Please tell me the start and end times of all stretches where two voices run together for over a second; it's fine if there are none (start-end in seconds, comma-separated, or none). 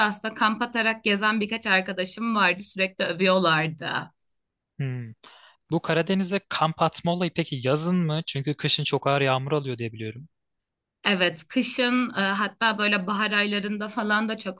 none